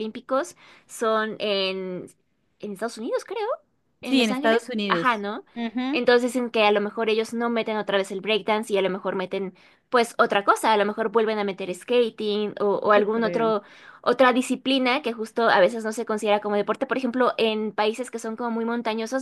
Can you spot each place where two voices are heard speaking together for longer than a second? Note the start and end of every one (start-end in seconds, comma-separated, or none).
4.0-5.2